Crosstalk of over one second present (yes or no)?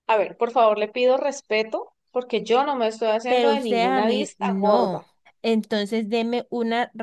yes